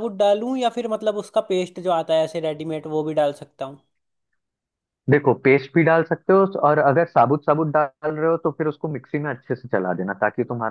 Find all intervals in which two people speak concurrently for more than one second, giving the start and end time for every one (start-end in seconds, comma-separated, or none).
none